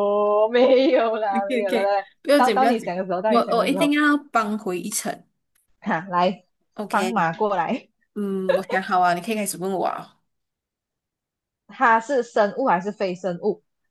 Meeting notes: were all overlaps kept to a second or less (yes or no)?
no